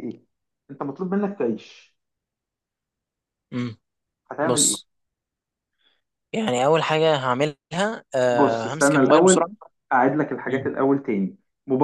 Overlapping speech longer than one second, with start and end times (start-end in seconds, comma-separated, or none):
8.3-9.5